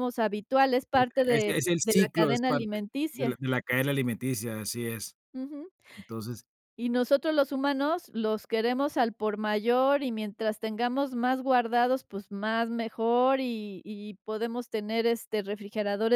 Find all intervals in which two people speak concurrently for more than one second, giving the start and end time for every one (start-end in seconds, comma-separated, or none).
0.9-3.4